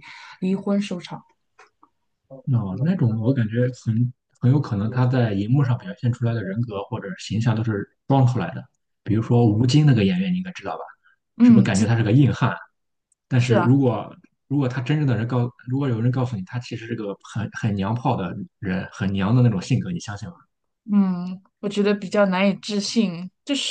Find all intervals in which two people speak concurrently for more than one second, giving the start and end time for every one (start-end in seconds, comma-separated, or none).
none